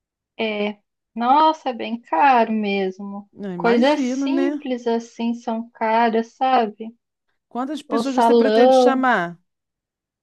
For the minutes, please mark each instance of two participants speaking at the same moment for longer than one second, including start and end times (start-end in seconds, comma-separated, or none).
3.3-4.6, 7.9-9.1